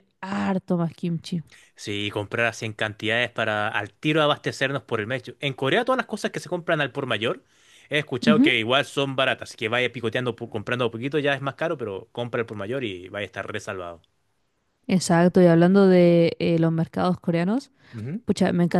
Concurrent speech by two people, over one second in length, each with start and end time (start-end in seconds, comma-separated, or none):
none